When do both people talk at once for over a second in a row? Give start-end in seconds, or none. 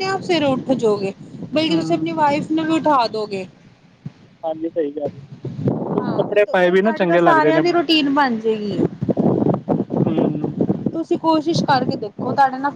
5.8-7.6